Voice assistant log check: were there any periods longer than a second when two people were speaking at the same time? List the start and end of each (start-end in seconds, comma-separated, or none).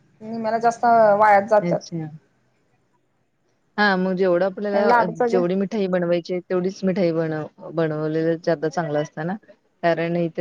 none